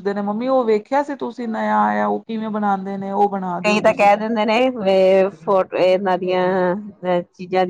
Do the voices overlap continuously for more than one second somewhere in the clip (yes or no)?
no